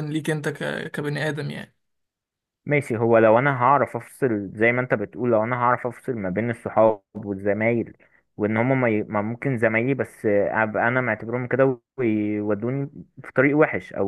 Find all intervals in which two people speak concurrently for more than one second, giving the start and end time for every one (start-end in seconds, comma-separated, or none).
none